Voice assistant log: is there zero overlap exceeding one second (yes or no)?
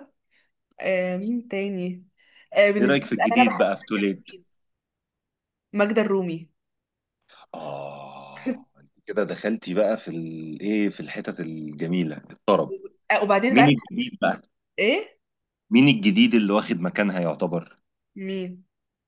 no